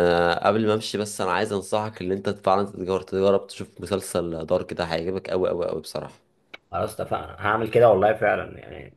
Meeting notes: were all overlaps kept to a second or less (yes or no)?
yes